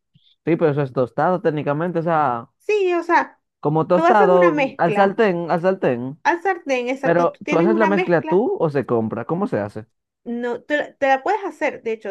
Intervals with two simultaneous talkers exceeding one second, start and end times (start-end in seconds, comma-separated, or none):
3.9-5.2, 7.0-8.4